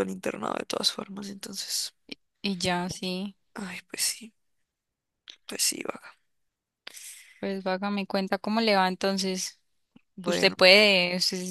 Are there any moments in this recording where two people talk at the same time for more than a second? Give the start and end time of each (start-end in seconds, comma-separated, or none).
none